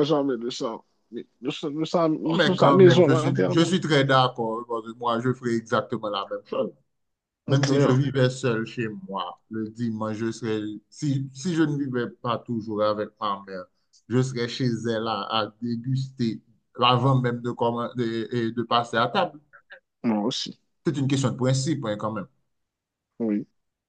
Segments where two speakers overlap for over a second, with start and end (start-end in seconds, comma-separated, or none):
2.2-3.7